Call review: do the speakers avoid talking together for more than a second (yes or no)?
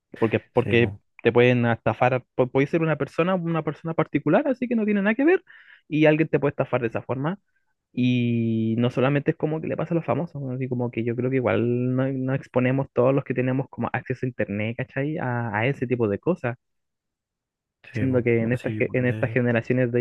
no